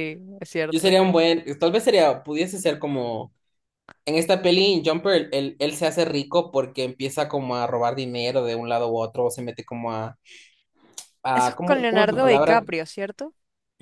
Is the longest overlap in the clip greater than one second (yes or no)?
yes